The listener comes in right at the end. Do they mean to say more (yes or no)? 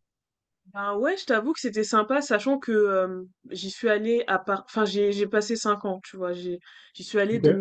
no